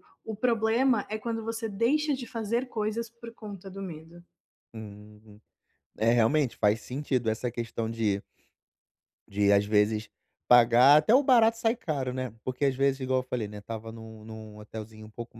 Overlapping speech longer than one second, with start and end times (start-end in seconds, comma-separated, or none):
none